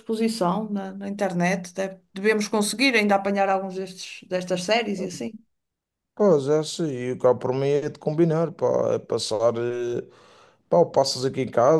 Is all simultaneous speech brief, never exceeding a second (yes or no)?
yes